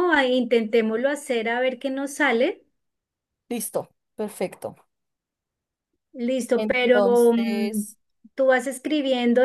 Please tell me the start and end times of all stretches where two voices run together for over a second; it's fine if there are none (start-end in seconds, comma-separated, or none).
6.5-7.9